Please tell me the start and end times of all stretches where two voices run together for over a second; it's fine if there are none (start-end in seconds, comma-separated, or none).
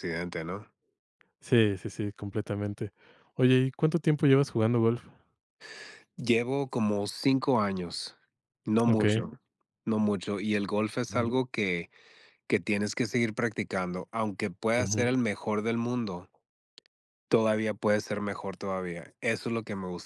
none